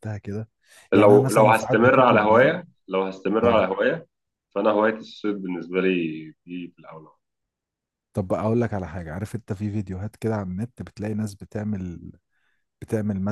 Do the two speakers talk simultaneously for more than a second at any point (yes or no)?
yes